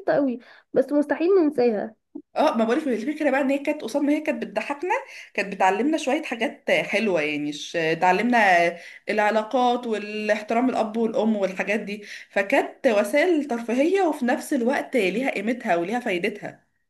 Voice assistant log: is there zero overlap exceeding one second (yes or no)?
yes